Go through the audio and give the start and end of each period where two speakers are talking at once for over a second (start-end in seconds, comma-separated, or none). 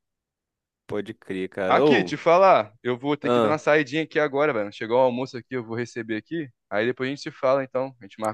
none